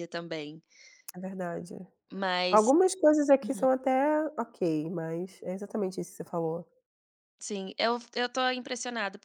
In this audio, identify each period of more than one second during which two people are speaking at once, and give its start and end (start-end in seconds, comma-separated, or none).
none